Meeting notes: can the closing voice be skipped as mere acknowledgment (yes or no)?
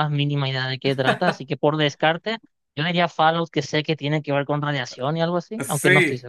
no